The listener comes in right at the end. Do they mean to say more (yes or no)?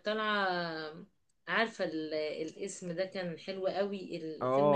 yes